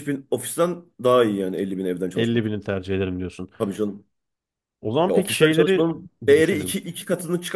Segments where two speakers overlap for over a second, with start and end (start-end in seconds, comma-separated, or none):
5.0-6.8